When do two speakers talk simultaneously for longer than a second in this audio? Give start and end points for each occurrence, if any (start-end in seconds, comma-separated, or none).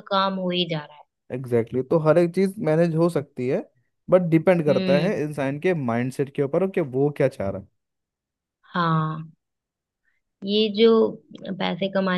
none